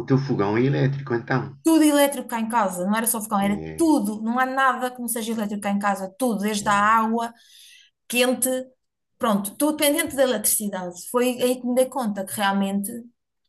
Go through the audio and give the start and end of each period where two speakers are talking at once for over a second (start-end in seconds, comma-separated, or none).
none